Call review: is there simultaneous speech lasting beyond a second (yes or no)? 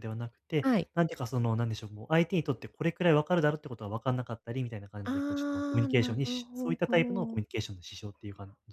yes